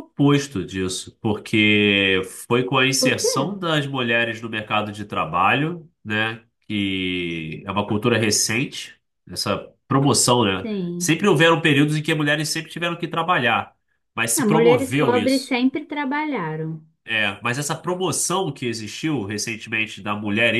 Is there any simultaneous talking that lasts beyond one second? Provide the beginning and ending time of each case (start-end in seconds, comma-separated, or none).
14.4-15.6